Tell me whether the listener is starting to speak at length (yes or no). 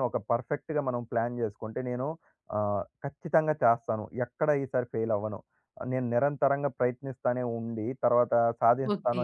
no